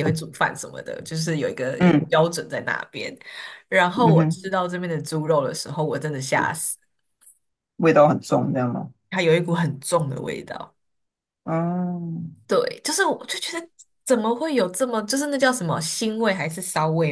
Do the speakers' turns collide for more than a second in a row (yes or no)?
no